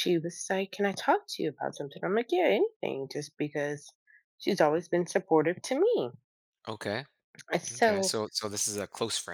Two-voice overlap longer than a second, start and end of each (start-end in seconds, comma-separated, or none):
none